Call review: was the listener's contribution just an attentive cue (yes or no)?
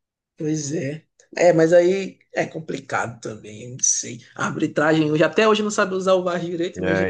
yes